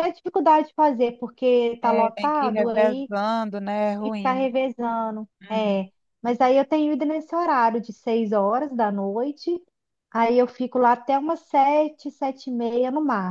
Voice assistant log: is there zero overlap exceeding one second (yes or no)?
no